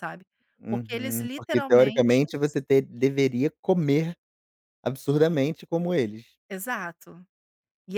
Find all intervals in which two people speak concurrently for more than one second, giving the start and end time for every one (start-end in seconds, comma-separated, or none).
0.7-2.2